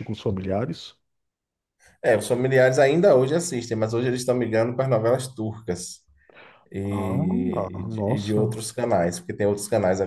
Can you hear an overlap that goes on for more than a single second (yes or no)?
yes